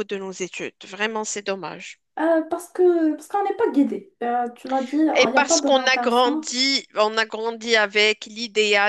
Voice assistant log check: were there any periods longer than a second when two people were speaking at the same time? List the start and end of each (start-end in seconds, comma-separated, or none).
5.2-6.5